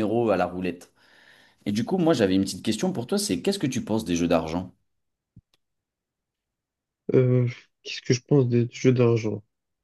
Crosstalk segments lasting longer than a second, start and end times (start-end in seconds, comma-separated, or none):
none